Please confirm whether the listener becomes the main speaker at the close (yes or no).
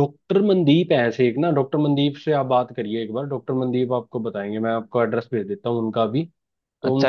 yes